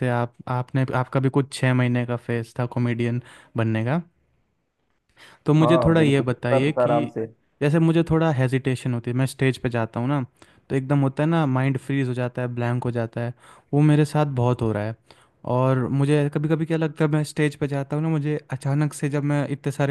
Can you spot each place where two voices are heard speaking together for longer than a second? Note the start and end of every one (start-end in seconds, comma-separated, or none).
5.6-7.1